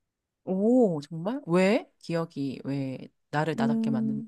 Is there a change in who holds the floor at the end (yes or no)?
yes